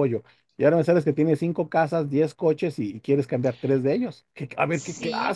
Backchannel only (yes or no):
no